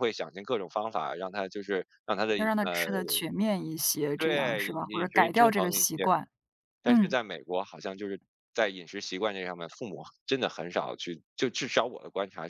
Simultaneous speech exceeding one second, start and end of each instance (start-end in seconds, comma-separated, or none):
4.2-6.1